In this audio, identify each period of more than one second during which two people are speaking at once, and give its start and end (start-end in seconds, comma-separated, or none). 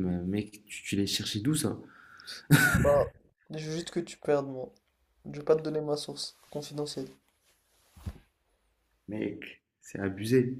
none